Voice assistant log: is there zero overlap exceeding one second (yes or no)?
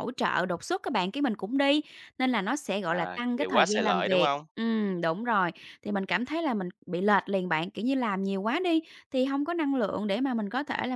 no